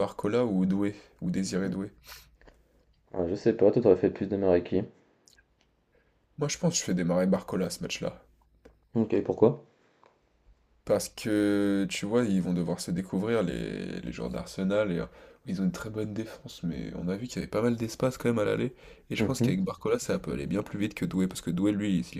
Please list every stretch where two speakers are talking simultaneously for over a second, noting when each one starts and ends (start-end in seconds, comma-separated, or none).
none